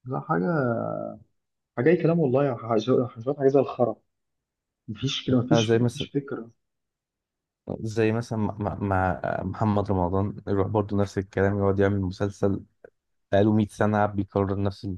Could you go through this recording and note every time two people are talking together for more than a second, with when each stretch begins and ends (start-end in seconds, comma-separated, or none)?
none